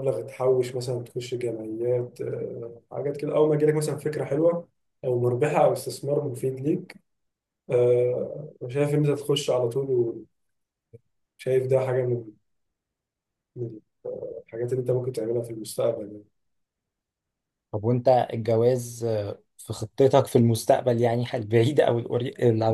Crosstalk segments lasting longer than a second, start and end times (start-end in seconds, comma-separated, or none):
none